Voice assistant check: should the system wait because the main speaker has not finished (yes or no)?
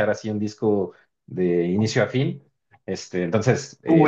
no